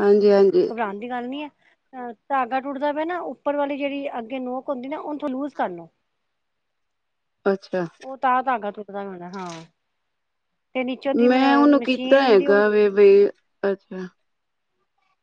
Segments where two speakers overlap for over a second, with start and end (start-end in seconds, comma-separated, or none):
11.3-12.6